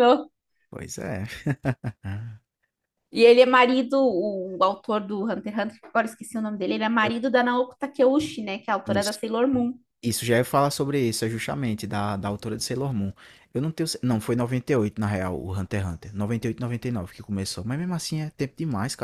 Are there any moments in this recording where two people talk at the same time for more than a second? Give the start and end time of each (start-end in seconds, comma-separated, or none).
none